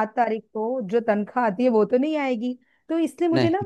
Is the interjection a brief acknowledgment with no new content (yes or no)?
yes